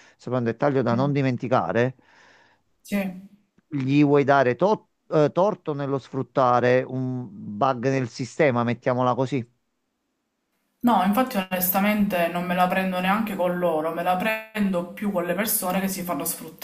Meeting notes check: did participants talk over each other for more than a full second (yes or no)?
no